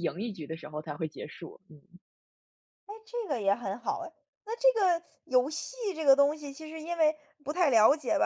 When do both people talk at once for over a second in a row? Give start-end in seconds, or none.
none